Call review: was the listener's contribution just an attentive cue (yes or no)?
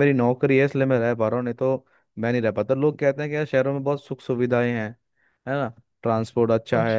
yes